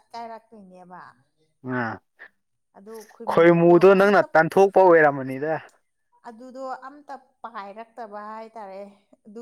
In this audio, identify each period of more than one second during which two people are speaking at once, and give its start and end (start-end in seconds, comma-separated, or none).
none